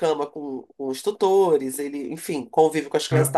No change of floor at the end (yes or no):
yes